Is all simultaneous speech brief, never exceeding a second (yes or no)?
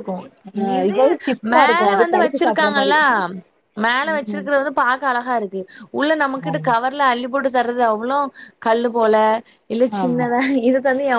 no